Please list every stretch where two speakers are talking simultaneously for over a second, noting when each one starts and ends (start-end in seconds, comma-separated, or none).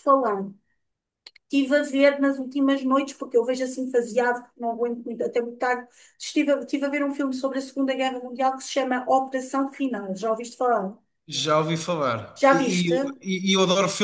none